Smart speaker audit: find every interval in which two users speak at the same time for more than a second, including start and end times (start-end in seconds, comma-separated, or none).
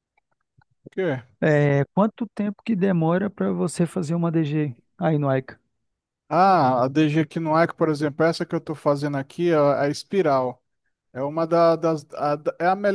none